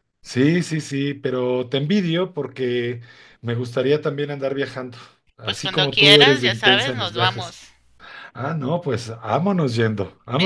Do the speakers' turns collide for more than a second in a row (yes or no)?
yes